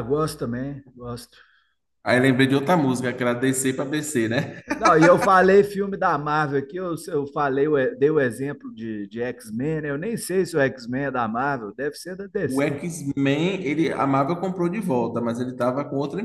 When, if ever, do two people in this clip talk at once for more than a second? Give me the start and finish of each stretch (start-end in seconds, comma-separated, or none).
none